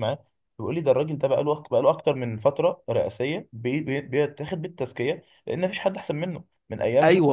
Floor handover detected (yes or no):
yes